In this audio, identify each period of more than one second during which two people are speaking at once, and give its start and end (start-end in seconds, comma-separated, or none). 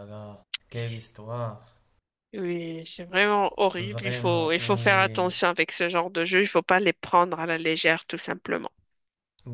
3.8-5.3